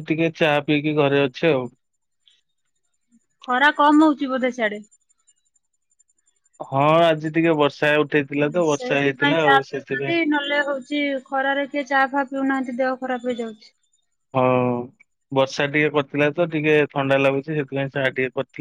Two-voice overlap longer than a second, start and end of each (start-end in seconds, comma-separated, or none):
8.7-10.1